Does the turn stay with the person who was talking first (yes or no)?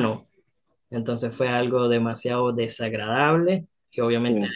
yes